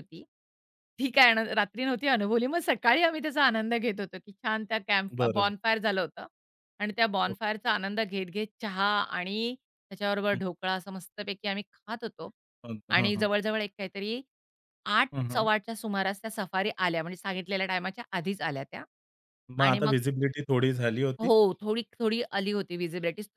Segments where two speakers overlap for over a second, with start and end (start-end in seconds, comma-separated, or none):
none